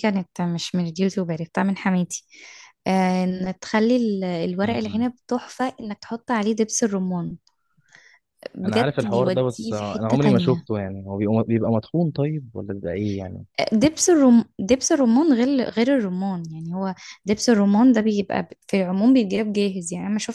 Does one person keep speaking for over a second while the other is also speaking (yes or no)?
yes